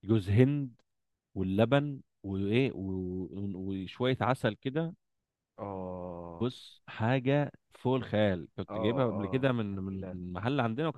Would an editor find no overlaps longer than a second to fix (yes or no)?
no